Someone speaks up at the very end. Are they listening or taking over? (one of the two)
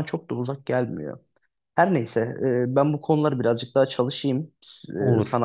listening